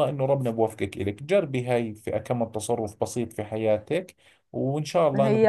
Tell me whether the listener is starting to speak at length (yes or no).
yes